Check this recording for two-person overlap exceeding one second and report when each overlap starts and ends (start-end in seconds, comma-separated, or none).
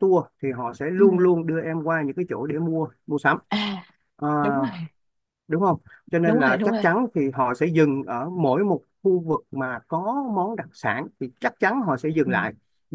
none